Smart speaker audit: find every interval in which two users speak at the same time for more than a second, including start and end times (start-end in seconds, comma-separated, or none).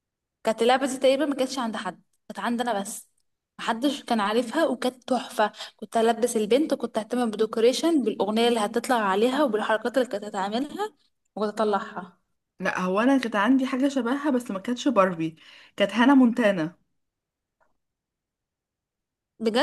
none